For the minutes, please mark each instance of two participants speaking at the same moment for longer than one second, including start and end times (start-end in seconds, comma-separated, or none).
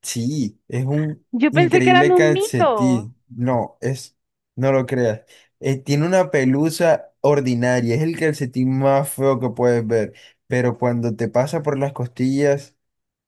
1.3-3.1